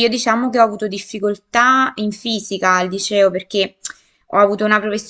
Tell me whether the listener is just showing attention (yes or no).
yes